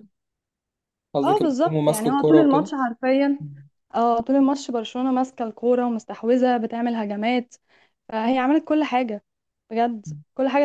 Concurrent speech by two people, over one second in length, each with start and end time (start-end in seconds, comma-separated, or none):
1.2-2.7